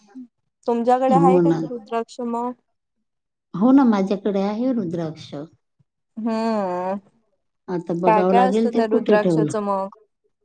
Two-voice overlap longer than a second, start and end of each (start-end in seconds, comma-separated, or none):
8.1-9.5